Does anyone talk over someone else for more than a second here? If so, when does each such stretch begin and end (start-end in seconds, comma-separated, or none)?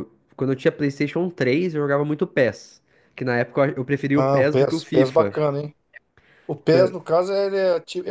4.1-5.4